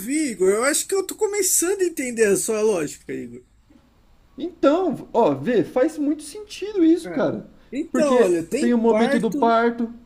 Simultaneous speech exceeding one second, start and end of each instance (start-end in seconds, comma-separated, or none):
7.9-9.5